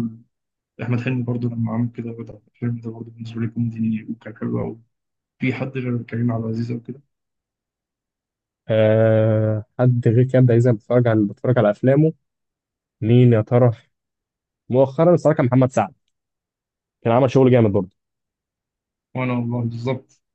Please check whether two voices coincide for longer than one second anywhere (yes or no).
no